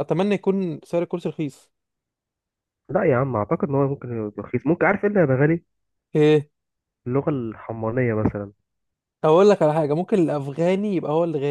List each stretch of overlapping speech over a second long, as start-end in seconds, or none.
none